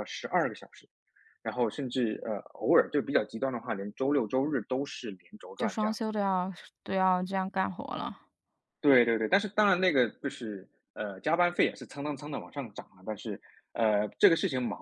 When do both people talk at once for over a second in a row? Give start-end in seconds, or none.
none